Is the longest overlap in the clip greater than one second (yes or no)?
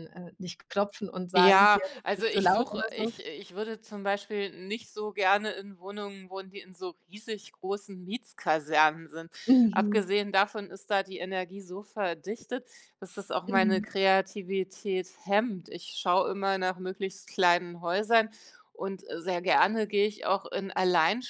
yes